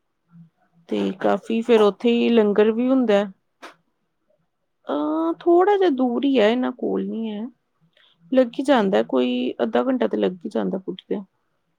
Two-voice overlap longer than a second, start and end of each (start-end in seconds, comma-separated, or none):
1.6-3.2